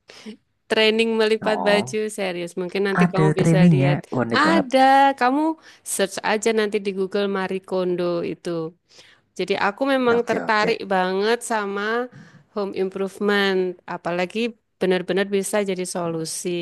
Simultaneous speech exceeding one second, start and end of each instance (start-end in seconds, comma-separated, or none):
3.0-4.7